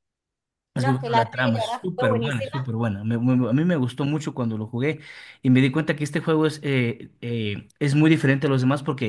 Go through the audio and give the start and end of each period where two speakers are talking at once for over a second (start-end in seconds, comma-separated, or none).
0.8-2.6